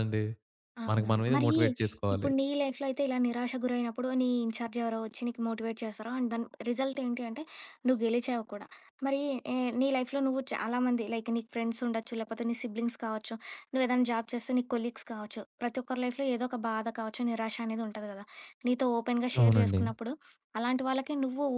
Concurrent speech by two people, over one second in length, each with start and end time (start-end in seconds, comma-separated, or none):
none